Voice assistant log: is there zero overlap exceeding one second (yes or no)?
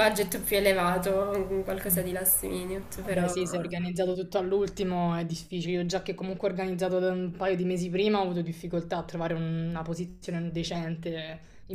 yes